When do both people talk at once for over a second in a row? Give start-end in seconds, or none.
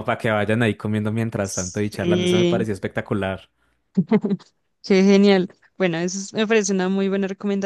1.4-2.7